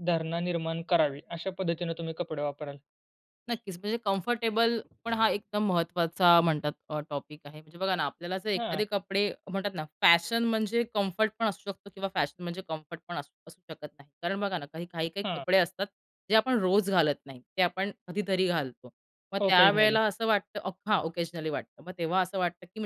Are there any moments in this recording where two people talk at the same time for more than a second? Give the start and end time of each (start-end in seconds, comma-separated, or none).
none